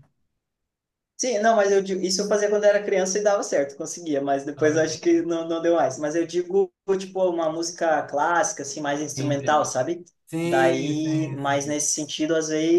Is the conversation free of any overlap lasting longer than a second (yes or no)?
no